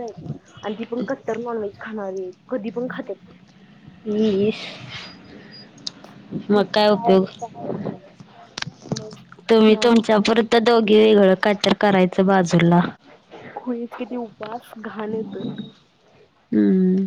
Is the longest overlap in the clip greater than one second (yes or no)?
no